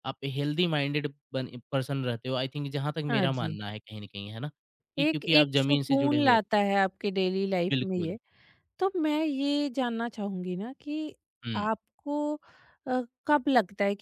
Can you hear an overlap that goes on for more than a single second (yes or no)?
yes